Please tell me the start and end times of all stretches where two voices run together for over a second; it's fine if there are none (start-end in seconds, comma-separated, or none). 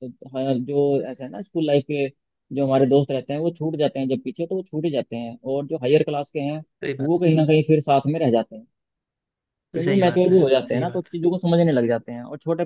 9.7-11.2